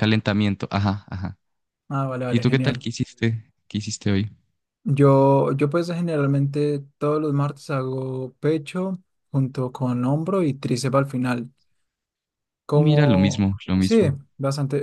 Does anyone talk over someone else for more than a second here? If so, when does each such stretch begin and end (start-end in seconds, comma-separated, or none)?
12.7-14.2